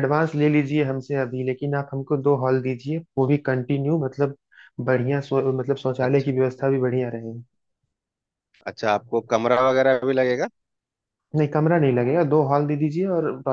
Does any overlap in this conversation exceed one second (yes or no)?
no